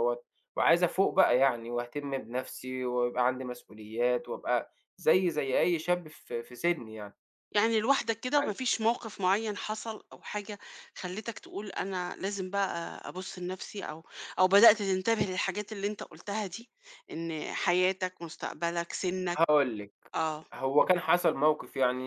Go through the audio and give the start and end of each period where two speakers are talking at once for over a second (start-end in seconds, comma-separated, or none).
none